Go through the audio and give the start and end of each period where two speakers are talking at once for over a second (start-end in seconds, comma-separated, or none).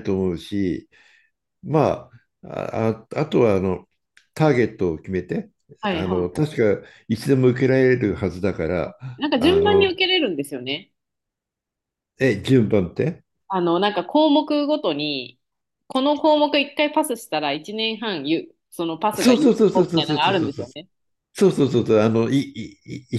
19.1-20.6